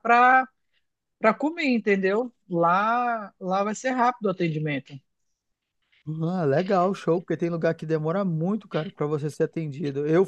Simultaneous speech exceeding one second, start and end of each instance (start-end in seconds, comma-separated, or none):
none